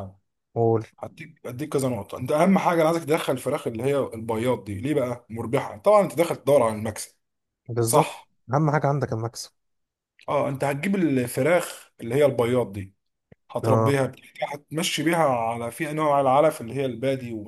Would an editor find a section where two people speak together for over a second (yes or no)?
no